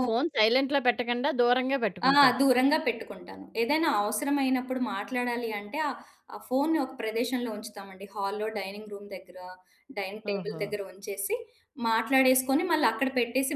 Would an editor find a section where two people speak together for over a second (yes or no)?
no